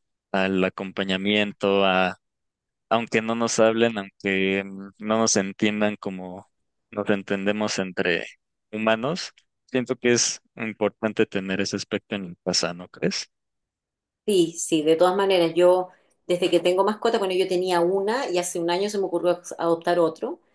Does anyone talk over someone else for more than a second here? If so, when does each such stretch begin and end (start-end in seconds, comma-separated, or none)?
none